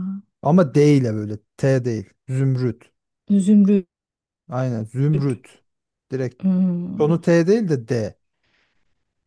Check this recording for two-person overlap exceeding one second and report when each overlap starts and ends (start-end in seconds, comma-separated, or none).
none